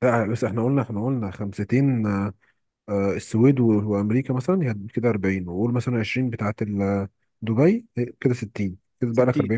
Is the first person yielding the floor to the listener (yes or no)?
yes